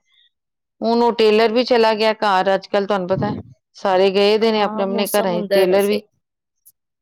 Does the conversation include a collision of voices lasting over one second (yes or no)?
yes